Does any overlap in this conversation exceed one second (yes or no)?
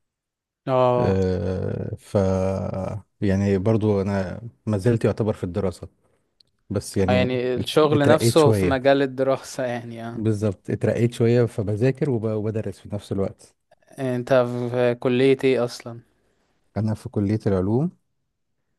yes